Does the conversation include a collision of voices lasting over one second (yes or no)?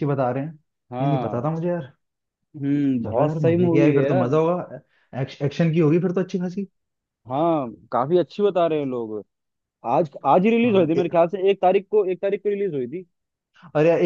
yes